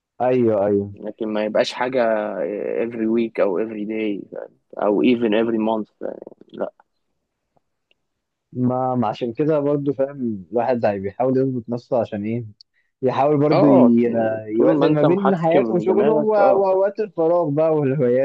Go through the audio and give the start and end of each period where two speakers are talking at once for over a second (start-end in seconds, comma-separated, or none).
14.6-16.7